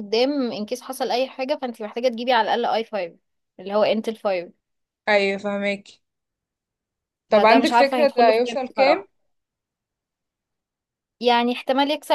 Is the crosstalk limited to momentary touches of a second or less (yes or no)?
no